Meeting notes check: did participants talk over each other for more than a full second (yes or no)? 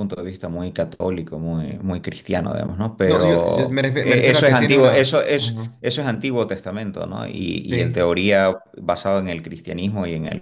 yes